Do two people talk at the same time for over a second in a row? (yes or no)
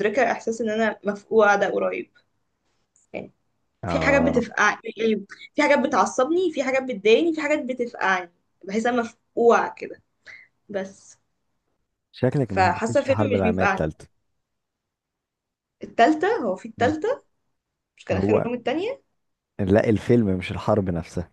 yes